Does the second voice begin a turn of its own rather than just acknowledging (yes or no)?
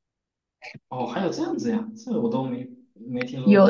no